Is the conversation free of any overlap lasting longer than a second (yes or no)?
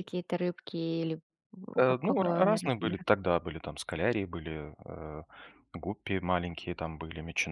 no